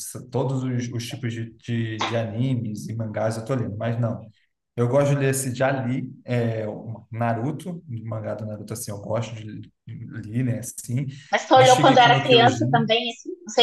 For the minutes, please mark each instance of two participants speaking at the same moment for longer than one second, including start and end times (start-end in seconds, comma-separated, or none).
11.5-12.9